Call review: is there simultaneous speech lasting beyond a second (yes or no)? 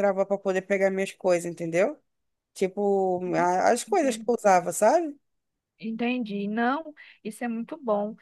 no